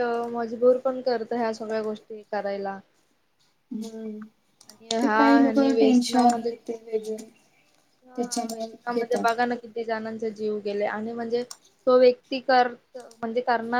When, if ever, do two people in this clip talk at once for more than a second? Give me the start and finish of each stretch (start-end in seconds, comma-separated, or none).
5.0-6.5